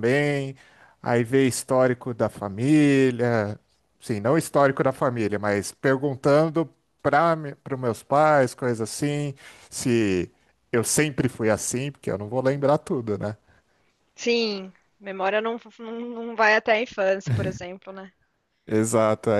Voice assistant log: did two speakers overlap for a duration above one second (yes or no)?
no